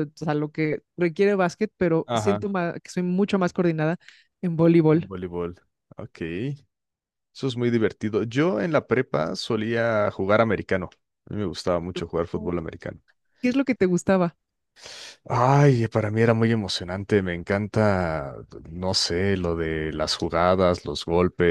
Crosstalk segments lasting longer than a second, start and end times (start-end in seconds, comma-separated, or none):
none